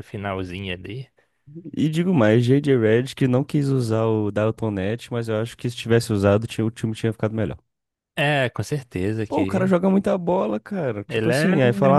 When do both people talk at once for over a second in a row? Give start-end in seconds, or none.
none